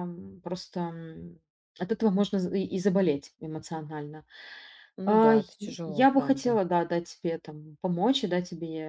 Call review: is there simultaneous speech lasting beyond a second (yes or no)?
yes